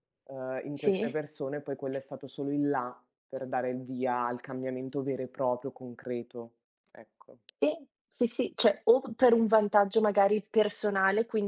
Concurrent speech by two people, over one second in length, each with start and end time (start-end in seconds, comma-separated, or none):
none